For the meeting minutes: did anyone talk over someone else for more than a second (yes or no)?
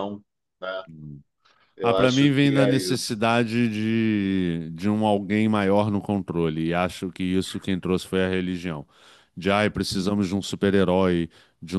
yes